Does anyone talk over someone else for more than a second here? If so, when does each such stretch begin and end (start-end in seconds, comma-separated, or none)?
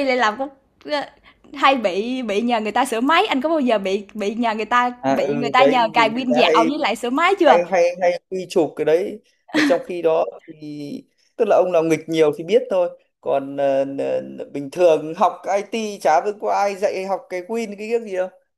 5.0-6.7